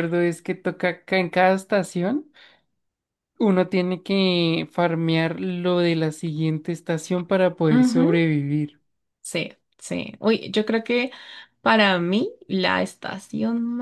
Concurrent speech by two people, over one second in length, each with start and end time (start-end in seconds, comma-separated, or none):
none